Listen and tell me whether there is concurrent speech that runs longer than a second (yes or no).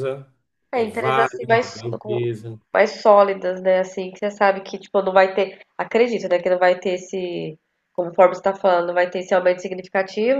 yes